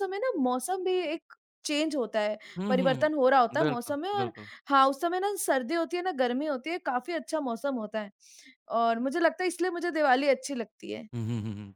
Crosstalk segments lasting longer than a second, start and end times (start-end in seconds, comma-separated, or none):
2.6-4.3